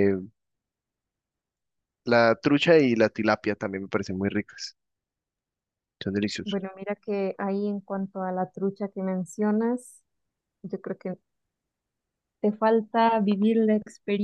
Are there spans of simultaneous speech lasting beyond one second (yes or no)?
no